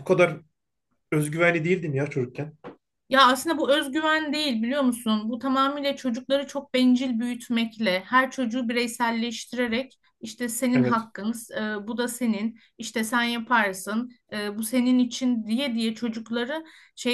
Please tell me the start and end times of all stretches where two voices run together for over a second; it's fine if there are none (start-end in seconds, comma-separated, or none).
none